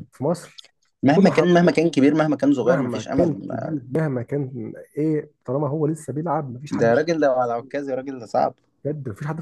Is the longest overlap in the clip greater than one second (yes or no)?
yes